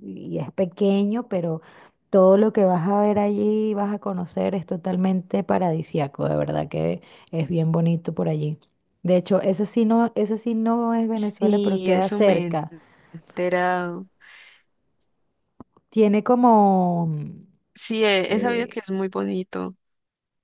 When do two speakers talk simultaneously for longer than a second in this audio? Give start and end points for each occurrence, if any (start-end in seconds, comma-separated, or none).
11.1-12.6